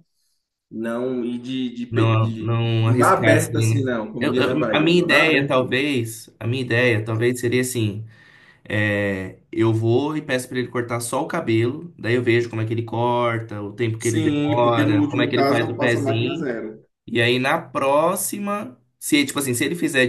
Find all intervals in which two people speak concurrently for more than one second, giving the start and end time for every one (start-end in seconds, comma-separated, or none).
1.9-5.8, 14.0-16.5